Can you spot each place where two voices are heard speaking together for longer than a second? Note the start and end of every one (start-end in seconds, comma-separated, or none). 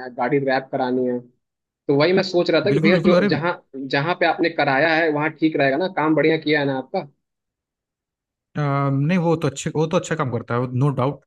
none